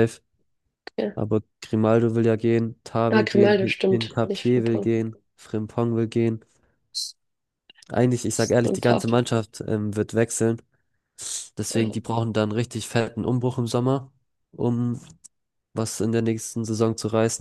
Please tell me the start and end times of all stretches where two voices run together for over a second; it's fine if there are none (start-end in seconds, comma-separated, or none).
3.1-4.9